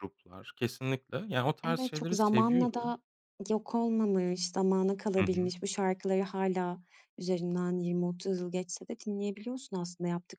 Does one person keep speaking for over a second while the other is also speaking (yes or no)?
yes